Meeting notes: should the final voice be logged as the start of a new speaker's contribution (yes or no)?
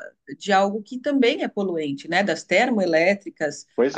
no